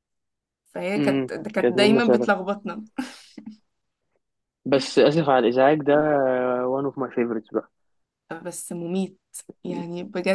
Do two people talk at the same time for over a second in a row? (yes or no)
yes